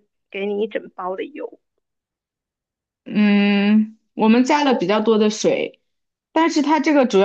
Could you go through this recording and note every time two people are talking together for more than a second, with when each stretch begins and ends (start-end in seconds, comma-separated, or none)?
none